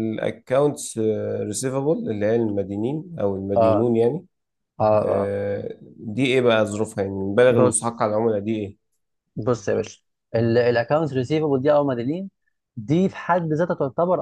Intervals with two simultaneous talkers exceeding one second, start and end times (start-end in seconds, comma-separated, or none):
none